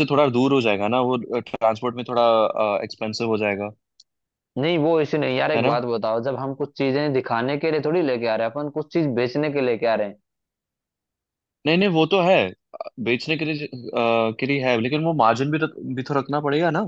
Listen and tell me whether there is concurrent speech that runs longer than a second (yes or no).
no